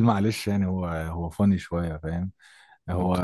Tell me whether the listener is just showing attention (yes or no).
yes